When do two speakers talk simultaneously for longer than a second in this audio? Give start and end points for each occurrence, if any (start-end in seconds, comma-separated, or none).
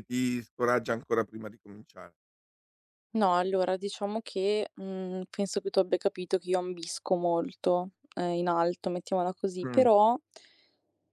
none